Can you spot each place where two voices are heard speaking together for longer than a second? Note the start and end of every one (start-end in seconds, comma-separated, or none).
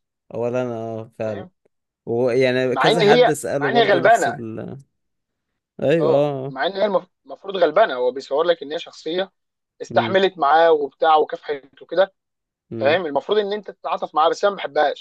2.7-4.4